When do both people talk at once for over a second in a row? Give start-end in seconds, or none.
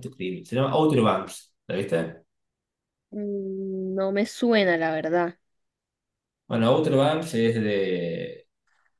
none